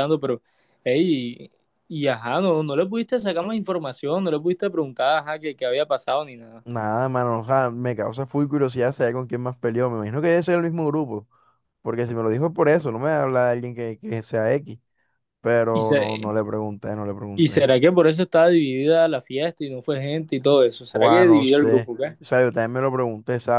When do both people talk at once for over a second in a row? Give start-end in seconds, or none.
20.9-22.2